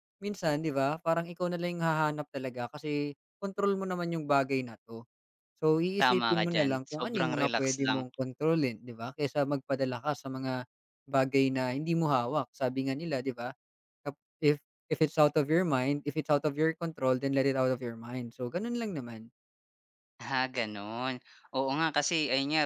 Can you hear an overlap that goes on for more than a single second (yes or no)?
yes